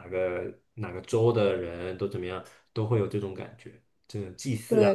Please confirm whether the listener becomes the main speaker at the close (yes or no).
yes